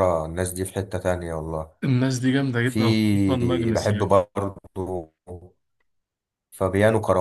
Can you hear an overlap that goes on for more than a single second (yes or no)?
yes